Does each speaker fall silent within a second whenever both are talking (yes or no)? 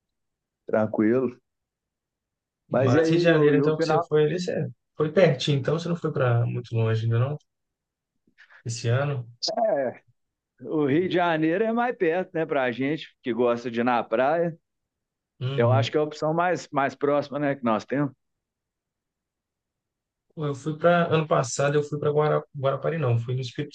no